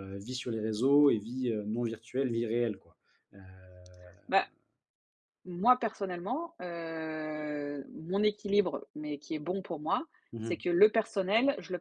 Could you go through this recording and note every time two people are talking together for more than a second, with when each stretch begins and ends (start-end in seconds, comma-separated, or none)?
none